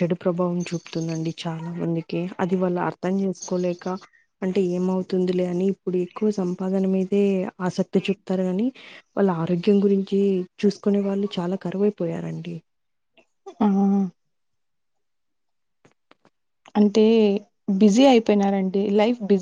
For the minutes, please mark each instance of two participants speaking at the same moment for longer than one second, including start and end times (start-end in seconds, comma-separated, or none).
none